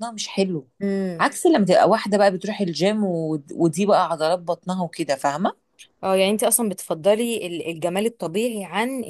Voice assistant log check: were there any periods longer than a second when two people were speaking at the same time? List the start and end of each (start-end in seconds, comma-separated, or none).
none